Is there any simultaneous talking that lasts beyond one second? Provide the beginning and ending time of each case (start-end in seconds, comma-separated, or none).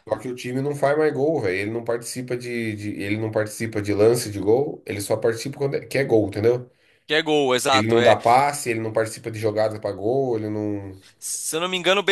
none